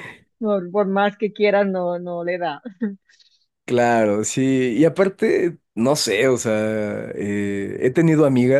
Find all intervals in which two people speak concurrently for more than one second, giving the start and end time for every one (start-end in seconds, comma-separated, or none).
none